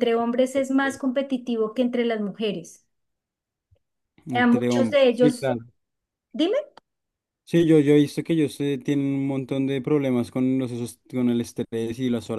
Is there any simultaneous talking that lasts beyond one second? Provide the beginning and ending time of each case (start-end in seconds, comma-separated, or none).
4.3-5.5